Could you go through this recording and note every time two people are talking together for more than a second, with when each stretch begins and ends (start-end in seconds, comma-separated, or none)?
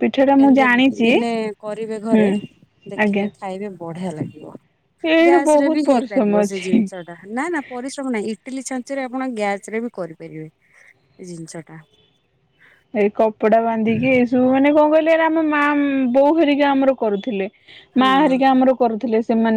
5.3-6.8